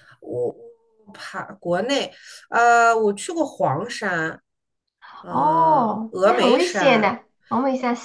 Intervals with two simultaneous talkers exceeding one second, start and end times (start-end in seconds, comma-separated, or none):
5.3-7.2